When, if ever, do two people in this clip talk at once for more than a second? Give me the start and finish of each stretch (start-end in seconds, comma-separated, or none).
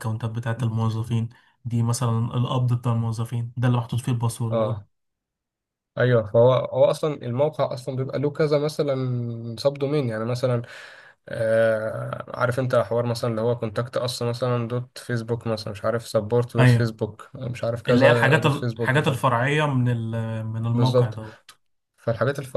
17.9-19.1